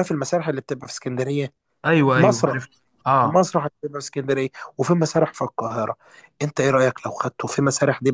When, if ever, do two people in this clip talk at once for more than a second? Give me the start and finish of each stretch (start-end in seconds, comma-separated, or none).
none